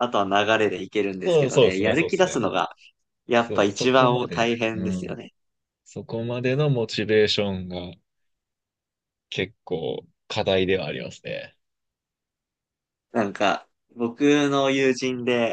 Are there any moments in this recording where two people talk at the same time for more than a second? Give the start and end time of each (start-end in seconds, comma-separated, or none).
1.2-2.5, 3.4-5.3